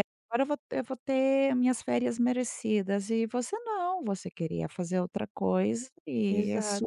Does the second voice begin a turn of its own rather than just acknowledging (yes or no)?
yes